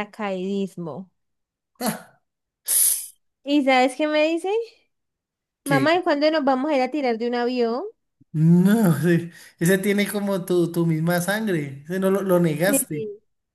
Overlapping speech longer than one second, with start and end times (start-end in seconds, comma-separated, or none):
none